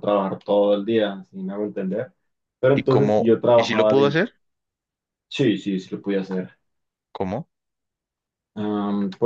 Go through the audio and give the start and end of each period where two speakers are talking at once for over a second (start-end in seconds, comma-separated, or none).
2.7-4.2